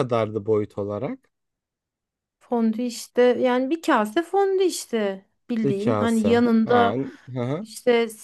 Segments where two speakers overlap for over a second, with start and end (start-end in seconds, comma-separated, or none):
5.6-6.9